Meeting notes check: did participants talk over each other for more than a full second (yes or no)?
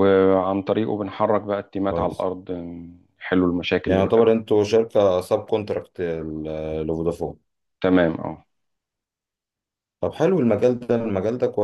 no